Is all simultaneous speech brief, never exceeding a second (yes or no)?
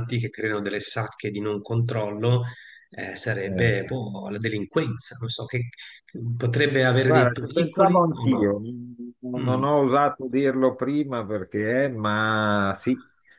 no